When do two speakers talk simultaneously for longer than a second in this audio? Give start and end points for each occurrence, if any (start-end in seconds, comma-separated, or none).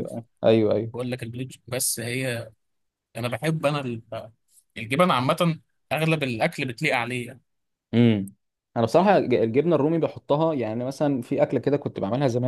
none